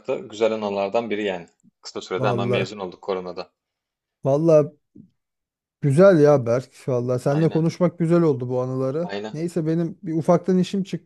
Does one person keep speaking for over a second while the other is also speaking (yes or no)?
no